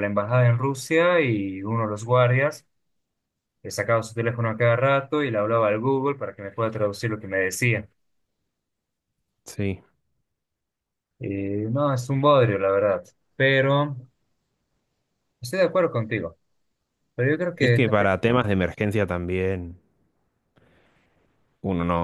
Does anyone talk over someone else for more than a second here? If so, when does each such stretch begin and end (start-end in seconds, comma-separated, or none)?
none